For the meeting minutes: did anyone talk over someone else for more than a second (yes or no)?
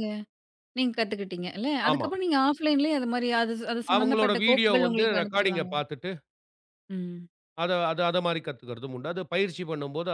yes